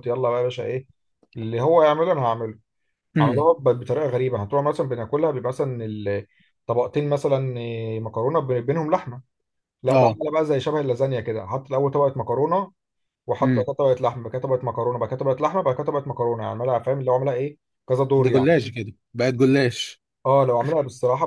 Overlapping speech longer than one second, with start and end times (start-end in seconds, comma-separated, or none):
none